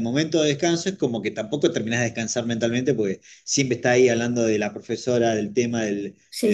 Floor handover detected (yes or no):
yes